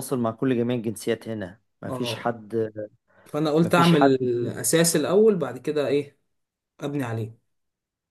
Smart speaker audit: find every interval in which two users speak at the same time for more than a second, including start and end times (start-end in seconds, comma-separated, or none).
none